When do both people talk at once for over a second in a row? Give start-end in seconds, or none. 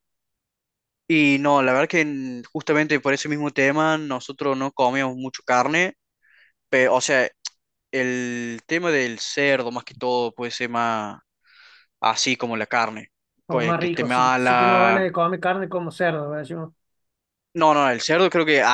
13.5-15.1